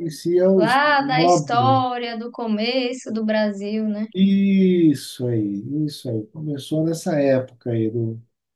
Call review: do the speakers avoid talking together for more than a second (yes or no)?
no